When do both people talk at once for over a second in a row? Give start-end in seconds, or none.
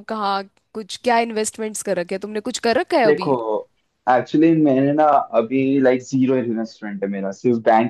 none